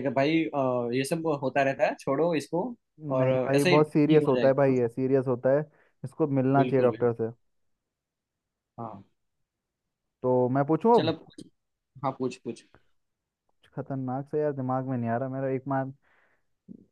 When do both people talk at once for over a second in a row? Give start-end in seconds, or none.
3.2-4.7